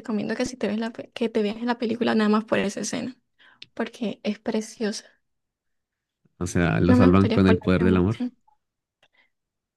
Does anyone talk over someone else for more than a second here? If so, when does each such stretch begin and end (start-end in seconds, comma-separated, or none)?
6.9-8.2